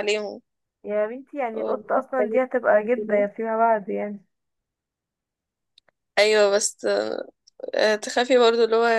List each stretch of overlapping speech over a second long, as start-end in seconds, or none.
1.5-3.2